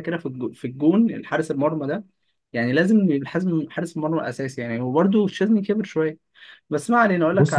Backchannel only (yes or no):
no